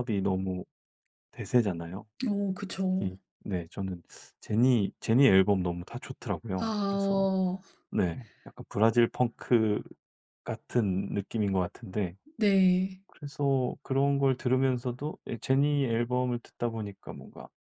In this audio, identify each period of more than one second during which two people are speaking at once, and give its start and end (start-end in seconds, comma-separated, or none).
none